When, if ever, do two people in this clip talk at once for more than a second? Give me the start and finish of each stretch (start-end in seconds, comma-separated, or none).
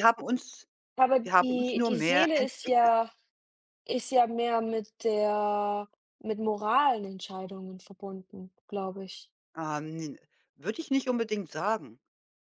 1.2-3.1